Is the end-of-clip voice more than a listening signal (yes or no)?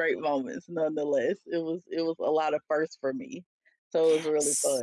yes